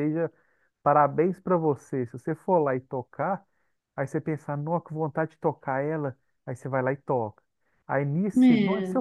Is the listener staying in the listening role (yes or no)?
yes